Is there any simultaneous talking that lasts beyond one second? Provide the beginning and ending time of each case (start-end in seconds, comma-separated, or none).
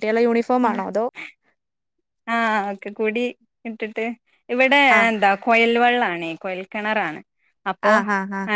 none